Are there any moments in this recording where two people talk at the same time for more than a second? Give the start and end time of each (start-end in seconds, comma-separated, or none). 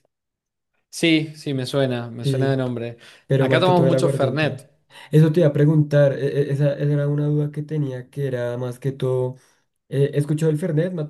3.4-4.6